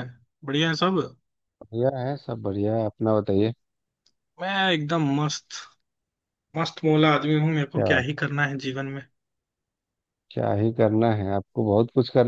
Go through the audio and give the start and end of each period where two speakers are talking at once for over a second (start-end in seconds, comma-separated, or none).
none